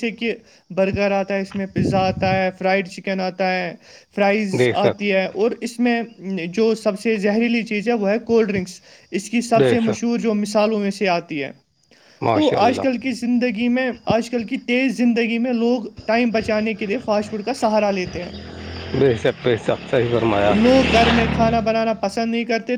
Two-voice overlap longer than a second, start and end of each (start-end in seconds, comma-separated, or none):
none